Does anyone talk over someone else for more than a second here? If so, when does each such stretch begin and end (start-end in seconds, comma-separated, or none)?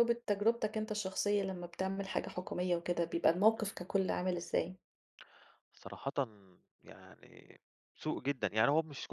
none